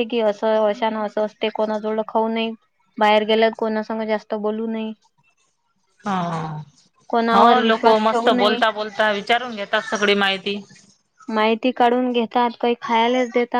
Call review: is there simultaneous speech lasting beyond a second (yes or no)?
yes